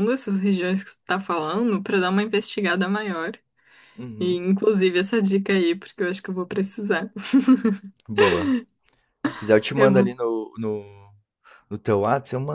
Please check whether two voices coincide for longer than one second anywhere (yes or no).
no